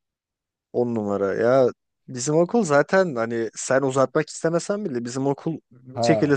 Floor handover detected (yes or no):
no